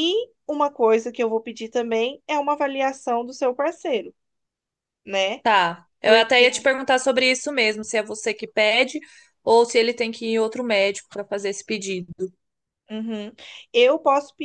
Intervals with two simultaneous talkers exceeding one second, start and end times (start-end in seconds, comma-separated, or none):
none